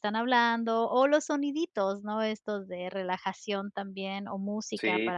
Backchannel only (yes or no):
yes